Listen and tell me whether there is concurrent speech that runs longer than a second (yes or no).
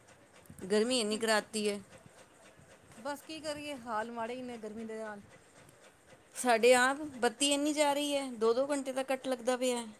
no